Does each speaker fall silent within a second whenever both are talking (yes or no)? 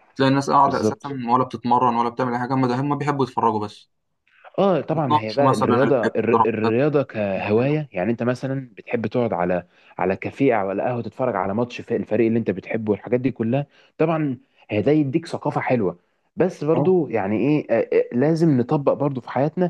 no